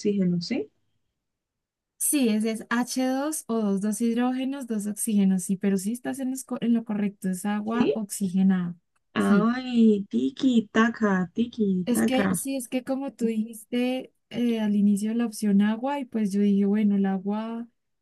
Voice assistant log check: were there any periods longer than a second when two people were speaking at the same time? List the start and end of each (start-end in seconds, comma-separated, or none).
none